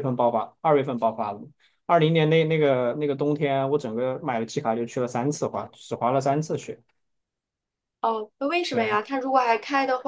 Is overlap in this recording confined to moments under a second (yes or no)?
yes